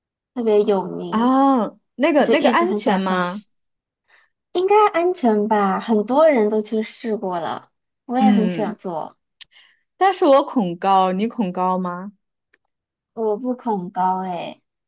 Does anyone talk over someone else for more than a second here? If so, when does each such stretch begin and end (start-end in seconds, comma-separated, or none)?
2.2-3.4